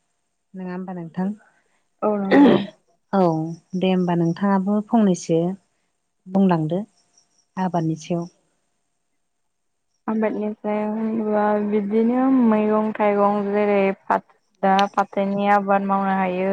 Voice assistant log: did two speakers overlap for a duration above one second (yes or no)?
no